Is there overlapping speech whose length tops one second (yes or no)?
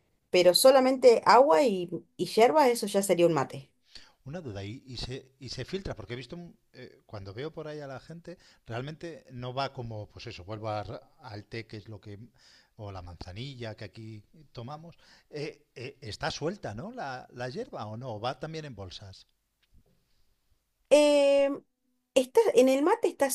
no